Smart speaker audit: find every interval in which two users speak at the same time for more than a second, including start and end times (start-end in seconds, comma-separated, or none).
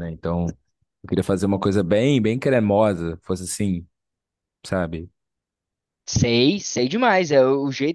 none